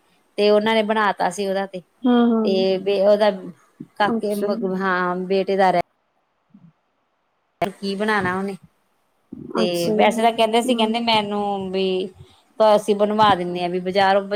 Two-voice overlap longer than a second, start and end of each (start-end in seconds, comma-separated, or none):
9.6-10.9